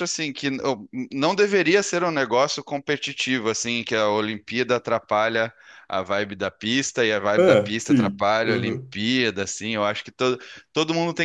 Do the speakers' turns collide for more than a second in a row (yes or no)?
yes